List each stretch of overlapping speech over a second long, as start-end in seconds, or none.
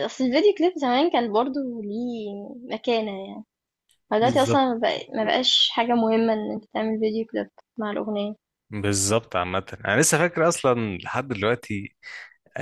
none